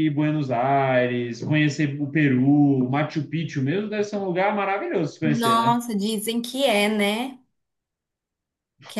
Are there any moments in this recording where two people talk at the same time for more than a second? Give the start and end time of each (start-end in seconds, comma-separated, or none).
none